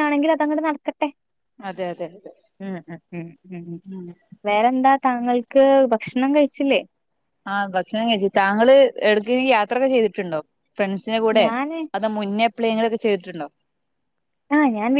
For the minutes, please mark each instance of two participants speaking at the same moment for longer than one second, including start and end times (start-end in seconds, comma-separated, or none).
none